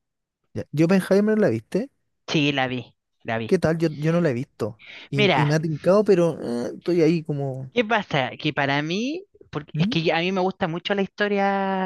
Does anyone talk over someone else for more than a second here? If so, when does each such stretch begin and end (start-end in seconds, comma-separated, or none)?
none